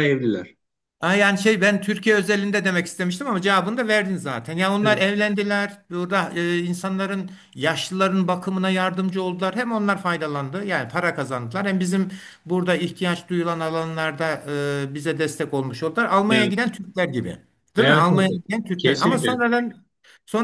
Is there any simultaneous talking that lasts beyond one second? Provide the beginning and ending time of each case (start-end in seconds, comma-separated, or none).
17.8-19.5